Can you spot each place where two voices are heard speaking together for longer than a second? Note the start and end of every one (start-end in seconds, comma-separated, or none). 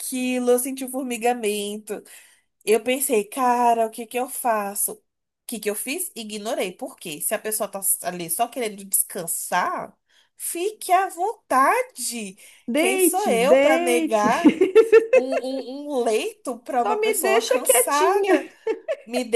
12.7-14.3, 16.8-18.5